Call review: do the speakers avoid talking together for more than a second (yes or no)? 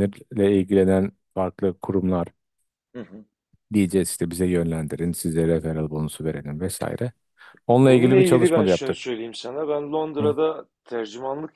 no